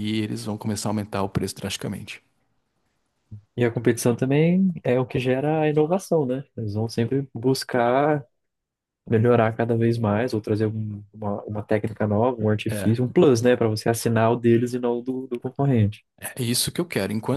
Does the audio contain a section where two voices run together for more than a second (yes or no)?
no